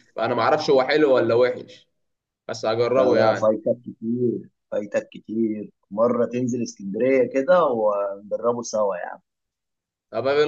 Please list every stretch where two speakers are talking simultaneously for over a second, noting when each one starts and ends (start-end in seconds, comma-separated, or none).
none